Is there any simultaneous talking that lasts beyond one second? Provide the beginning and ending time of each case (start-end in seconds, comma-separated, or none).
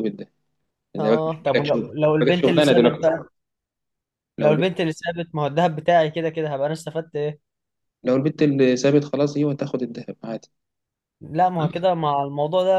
1.0-3.1